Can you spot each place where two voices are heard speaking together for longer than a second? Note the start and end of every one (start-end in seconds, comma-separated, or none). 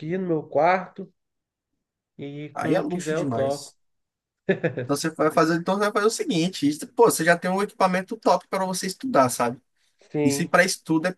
2.5-3.7